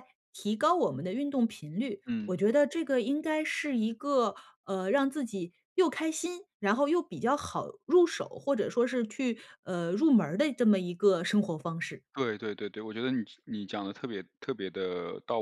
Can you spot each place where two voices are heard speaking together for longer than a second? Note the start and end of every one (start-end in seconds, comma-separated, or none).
none